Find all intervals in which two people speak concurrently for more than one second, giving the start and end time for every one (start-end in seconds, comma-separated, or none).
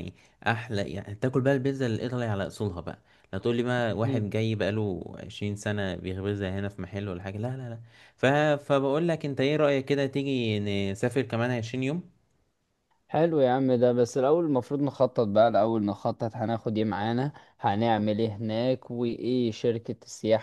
none